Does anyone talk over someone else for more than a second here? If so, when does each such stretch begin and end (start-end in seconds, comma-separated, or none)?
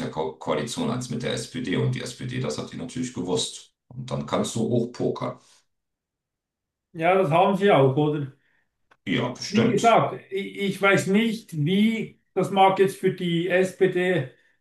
none